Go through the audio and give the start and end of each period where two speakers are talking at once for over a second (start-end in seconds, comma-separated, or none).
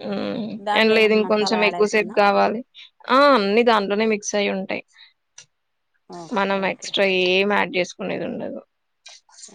0.7-2.1